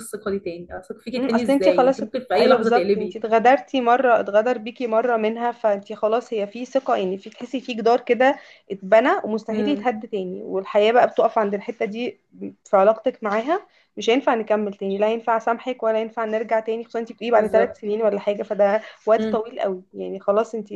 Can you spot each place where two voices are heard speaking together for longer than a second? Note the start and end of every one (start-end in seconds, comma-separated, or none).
1.2-3.2